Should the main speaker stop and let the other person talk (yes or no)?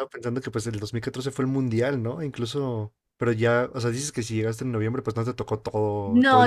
yes